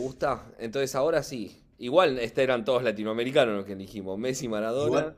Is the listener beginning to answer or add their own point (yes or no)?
yes